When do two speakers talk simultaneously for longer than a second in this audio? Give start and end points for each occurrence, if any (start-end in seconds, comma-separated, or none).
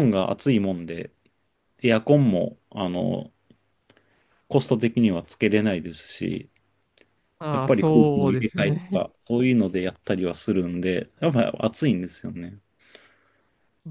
7.5-9.0